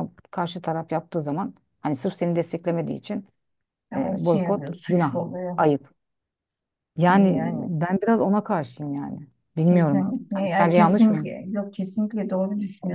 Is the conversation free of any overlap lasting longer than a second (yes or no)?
no